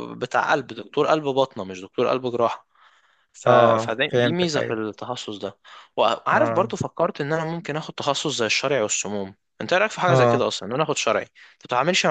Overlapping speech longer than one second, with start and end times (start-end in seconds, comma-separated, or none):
3.5-4.8